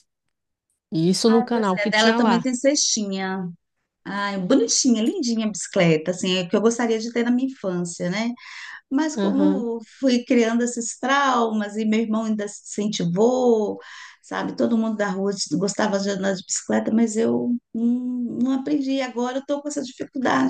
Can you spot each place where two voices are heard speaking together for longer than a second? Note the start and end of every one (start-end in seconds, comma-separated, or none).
1.3-2.5